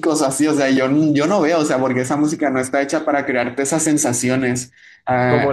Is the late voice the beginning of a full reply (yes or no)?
yes